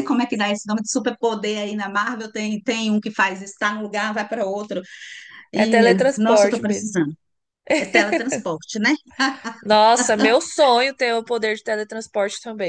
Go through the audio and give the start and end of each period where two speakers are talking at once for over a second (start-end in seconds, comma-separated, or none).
5.5-6.9